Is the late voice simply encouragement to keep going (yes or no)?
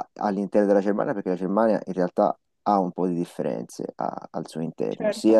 yes